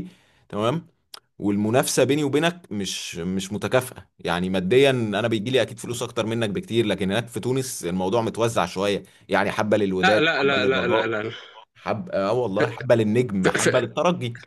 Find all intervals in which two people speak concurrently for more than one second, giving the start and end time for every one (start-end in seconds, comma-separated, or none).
10.0-11.2